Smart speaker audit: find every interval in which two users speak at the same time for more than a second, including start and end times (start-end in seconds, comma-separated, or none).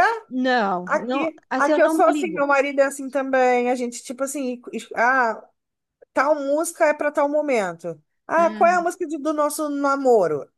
0.8-2.5